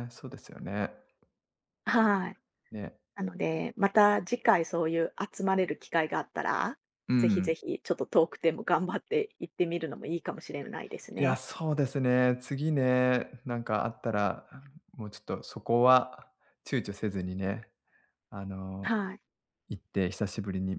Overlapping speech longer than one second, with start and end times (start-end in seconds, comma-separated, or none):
none